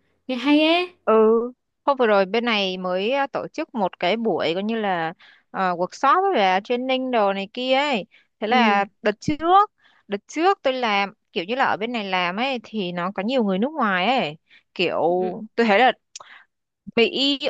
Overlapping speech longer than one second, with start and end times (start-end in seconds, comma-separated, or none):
none